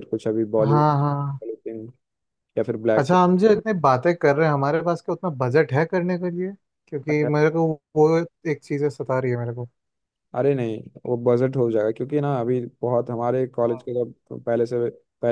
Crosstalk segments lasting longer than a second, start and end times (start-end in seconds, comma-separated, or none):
none